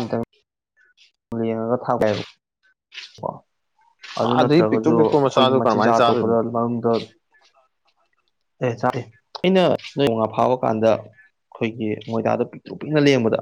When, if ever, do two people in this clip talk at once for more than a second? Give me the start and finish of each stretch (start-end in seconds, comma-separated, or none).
4.4-6.4